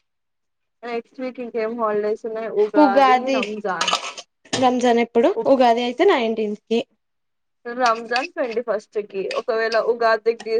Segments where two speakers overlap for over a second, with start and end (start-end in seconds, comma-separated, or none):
none